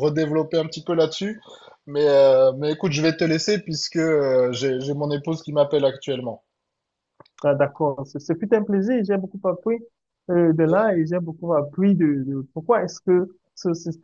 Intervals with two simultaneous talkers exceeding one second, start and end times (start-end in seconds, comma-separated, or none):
none